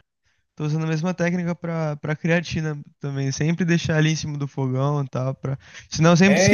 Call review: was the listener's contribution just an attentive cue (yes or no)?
yes